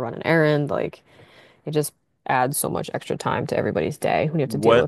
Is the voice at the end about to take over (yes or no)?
yes